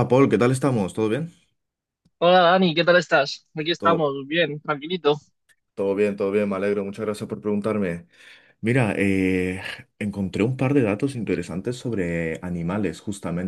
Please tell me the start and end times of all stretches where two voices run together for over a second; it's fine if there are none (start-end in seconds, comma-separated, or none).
none